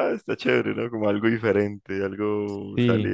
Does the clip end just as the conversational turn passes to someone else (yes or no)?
yes